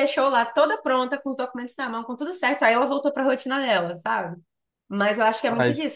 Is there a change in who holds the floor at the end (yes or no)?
no